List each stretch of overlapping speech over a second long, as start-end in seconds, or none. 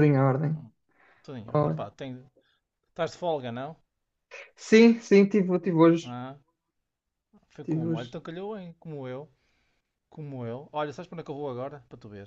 none